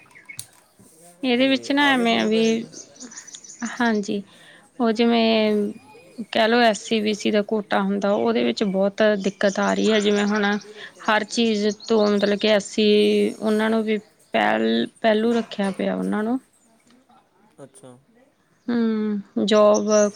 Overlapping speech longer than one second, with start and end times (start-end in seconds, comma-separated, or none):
1.4-2.6